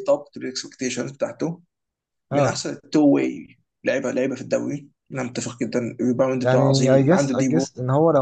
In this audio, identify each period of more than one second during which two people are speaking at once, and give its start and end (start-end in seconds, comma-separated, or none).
6.4-7.7